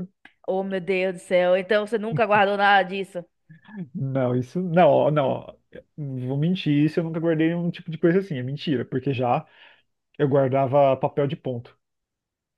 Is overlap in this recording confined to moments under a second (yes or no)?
yes